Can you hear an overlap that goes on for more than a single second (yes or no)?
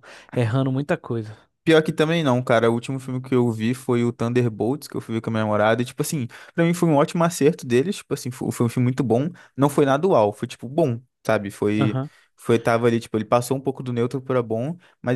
no